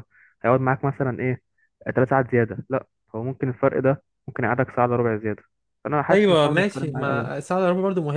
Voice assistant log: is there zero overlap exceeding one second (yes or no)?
no